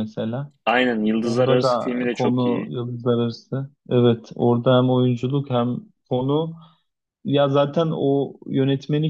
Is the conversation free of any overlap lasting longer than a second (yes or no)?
no